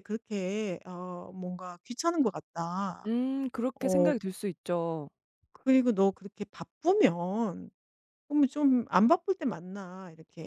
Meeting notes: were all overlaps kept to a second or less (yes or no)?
yes